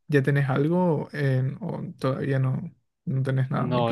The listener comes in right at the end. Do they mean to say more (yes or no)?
yes